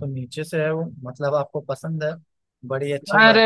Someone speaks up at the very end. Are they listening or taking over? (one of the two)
taking over